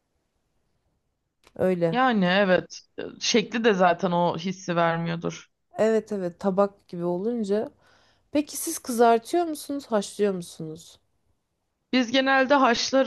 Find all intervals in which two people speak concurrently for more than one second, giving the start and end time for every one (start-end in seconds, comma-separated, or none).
none